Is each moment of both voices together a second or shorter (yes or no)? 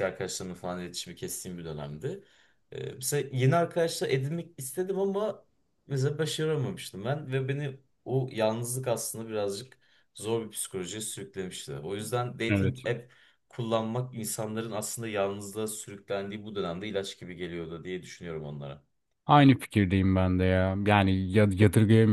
yes